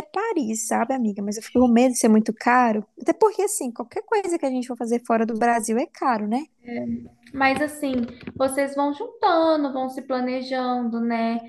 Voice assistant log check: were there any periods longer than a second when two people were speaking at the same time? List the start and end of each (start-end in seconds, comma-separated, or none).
none